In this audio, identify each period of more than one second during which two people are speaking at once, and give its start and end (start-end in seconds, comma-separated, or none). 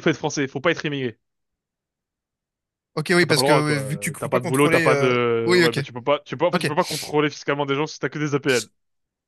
3.2-5.8